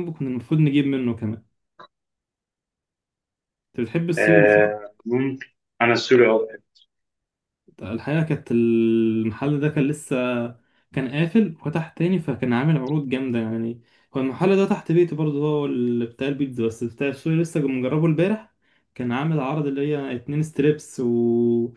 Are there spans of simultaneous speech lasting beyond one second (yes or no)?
no